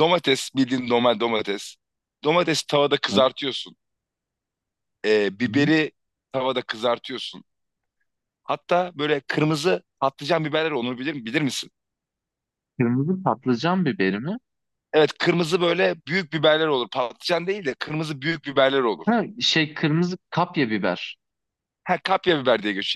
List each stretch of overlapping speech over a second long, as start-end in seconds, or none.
none